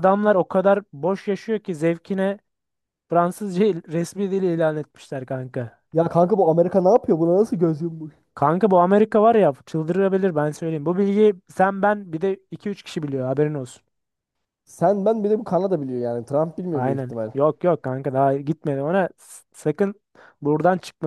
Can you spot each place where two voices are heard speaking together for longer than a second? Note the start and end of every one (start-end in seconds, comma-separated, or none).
none